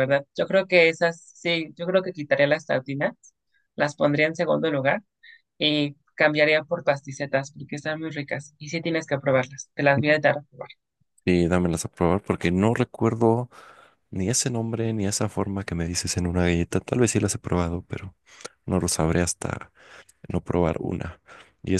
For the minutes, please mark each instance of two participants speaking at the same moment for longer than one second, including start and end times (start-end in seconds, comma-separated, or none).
none